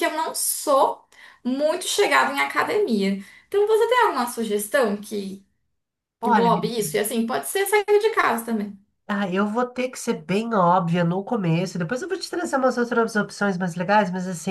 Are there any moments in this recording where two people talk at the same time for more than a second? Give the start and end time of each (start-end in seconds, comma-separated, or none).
none